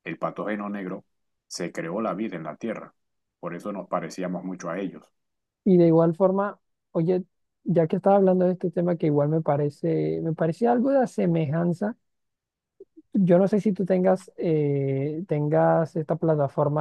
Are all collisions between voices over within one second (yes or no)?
yes